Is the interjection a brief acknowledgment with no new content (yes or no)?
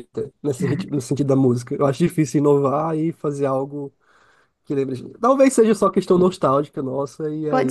no